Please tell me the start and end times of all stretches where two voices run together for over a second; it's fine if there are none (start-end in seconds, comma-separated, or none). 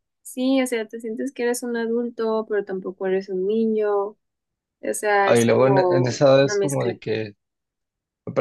5.2-7.0